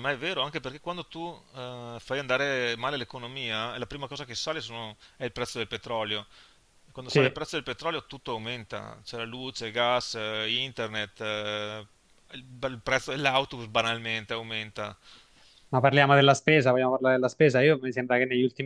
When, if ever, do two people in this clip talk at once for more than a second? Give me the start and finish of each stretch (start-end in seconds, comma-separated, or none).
none